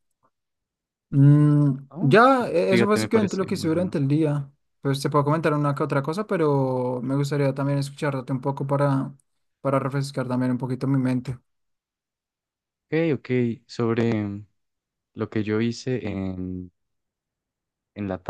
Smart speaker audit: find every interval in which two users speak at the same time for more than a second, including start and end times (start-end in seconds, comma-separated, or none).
1.9-4.0